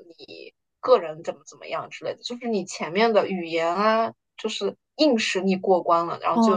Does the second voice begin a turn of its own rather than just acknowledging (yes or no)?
yes